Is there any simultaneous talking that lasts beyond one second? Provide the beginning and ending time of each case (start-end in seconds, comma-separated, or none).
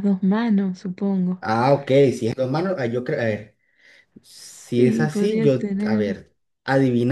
4.3-6.2